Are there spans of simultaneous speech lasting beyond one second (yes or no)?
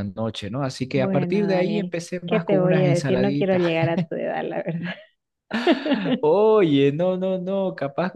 yes